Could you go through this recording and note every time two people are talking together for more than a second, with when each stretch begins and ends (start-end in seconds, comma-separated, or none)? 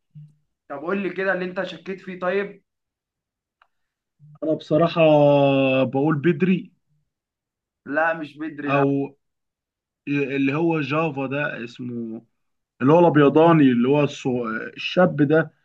none